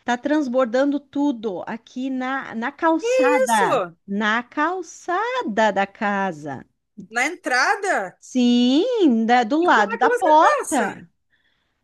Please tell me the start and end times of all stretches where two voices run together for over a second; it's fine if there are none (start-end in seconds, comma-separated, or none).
9.6-10.8